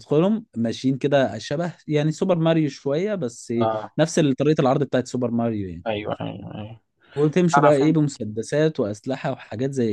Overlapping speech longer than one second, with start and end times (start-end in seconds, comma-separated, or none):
none